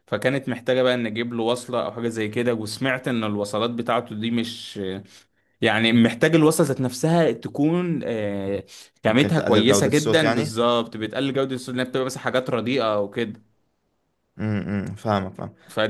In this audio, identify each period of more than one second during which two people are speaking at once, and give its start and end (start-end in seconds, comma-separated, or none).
9.1-10.5